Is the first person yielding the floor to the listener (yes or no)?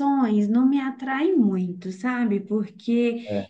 no